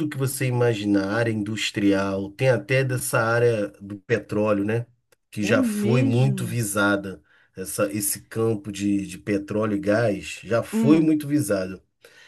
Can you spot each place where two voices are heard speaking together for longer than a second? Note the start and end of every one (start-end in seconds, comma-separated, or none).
5.4-6.6